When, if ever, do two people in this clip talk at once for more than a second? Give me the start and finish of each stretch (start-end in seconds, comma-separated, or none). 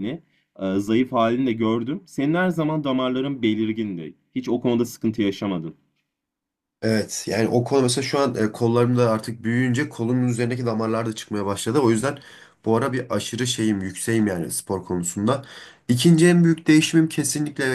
none